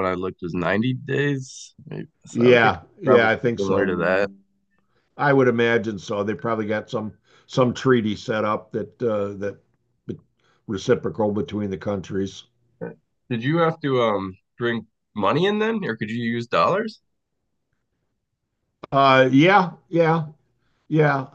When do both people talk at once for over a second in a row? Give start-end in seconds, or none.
2.3-3.9